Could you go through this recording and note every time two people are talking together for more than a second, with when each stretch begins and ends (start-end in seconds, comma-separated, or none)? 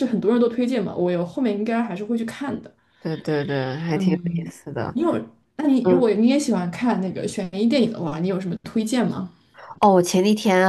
none